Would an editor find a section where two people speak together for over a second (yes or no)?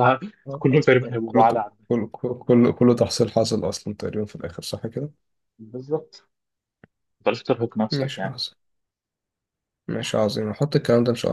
no